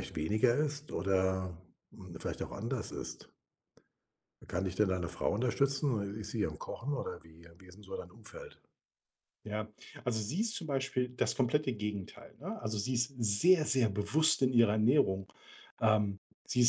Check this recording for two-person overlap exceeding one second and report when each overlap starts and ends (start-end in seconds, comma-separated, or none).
none